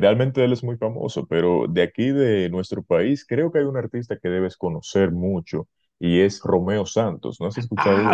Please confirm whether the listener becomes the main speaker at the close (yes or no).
yes